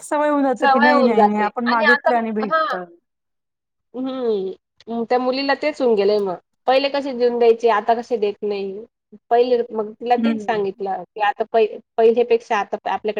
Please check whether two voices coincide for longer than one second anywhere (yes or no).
yes